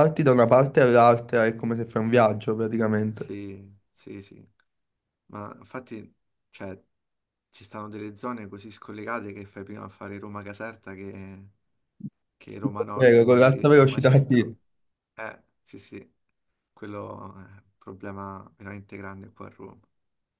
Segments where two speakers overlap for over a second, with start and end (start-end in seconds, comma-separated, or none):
12.9-14.6